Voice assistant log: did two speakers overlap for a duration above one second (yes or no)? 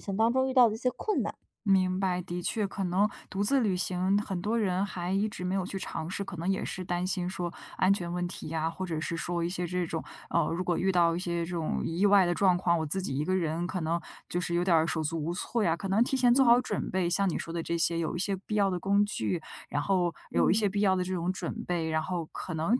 no